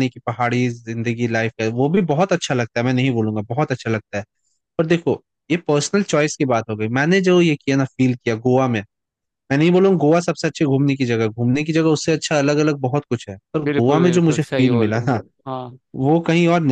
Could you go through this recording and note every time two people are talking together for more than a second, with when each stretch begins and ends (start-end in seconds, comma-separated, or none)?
13.6-15.2